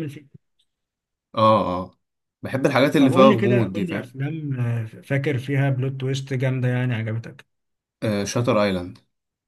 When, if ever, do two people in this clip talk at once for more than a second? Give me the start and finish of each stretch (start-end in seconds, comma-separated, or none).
3.0-4.2